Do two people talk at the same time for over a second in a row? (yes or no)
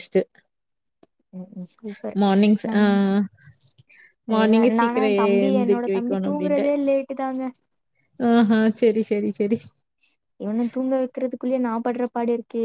yes